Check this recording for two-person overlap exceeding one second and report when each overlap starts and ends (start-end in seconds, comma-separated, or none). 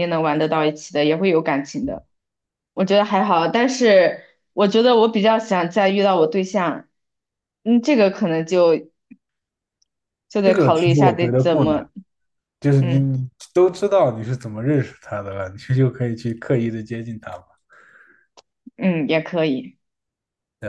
10.4-11.8